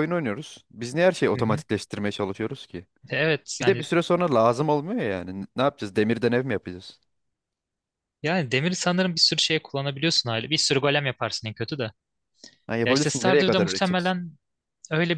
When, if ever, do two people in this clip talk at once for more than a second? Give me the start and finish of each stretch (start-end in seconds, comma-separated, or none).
12.8-14.1